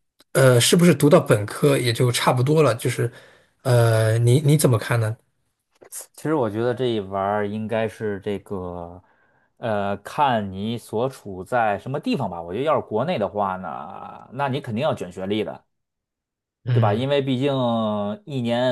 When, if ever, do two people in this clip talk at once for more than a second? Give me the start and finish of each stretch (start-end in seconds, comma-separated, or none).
none